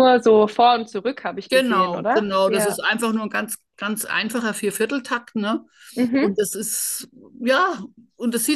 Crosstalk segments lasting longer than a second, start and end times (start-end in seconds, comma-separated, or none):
1.5-2.8